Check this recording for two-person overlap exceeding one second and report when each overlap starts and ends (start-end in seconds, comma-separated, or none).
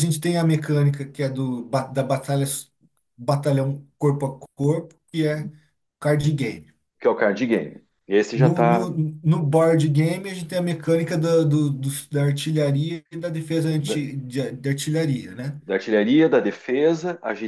none